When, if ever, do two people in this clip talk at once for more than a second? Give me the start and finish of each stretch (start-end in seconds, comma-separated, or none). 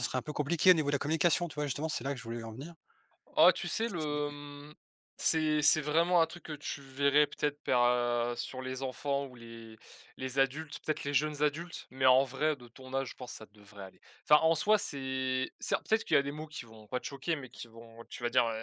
none